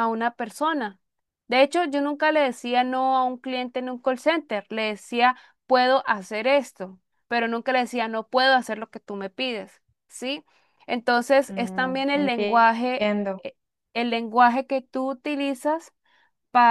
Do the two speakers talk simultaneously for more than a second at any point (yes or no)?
yes